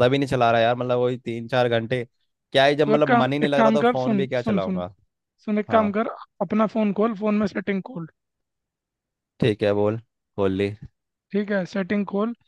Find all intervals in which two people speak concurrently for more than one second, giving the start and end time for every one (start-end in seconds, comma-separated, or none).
2.8-4.8